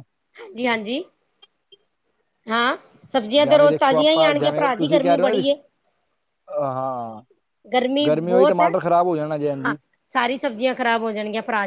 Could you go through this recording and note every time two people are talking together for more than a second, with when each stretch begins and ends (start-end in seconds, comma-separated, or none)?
3.4-5.5